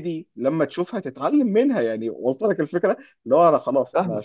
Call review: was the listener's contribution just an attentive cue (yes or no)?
yes